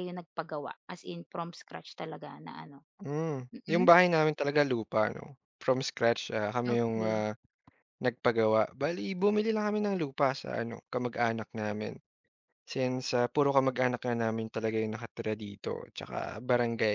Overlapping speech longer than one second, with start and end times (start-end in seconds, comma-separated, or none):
none